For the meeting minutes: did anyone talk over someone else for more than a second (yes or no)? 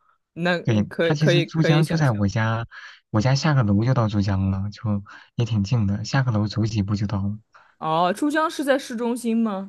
yes